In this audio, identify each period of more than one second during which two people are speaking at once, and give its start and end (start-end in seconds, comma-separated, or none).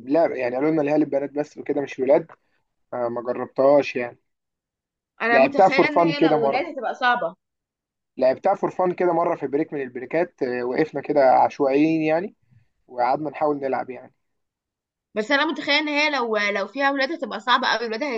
5.3-6.7